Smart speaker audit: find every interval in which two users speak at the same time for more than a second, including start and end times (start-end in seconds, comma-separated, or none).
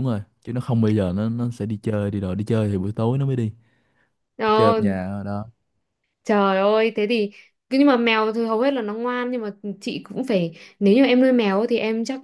none